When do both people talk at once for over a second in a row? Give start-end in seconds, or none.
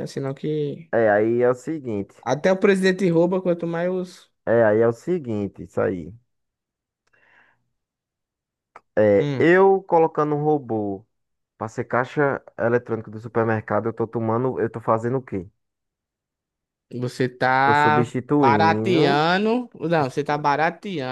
17.6-19.3